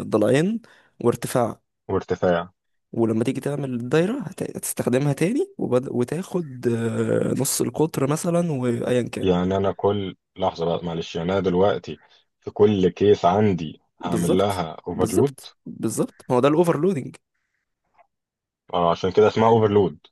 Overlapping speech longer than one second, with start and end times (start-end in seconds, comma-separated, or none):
14.1-15.3